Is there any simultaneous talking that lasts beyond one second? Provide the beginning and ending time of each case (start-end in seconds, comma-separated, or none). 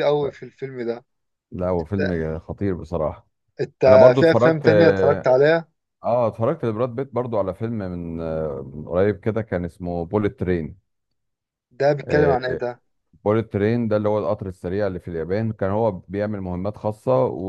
3.9-5.3